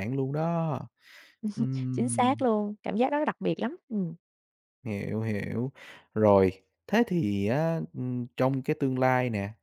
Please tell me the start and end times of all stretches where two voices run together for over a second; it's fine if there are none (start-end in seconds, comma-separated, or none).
none